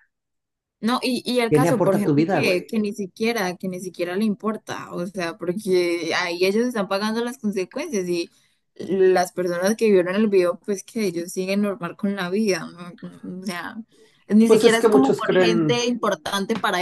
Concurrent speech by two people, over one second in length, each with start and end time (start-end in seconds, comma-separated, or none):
1.5-2.7, 14.5-15.8